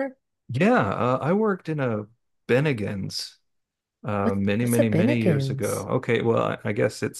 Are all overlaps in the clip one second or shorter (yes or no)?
no